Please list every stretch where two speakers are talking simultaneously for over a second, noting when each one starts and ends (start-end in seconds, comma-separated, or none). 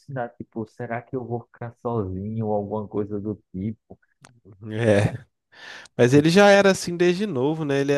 none